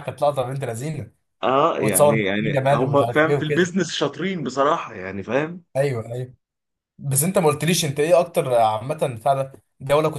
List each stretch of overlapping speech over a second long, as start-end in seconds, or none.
1.8-3.7